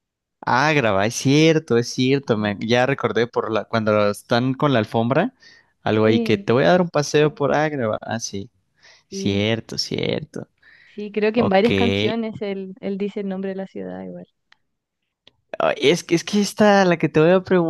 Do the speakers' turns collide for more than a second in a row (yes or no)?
no